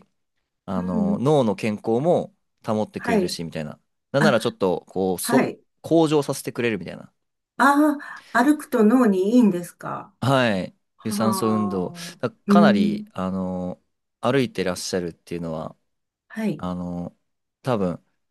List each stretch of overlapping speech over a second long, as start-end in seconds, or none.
11.0-13.1